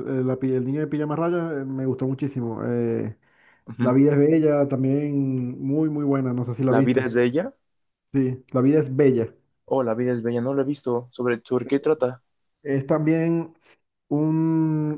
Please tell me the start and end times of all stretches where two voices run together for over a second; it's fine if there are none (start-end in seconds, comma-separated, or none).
none